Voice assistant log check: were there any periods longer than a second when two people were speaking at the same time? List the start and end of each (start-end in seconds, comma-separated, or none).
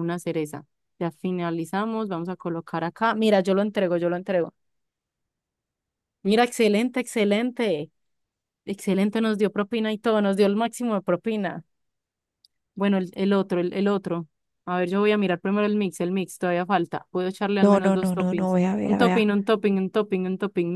17.6-19.2